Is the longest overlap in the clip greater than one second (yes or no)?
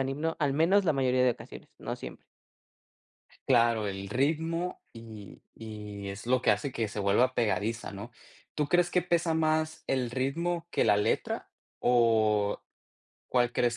no